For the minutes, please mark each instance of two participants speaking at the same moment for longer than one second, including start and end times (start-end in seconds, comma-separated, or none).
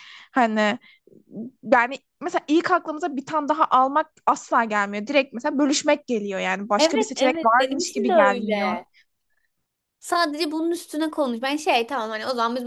6.8-8.8